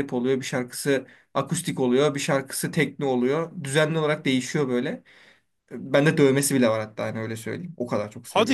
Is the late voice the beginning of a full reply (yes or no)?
yes